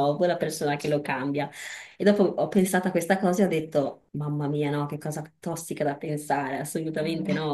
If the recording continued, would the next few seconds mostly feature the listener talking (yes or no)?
no